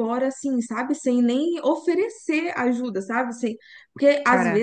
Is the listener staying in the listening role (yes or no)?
yes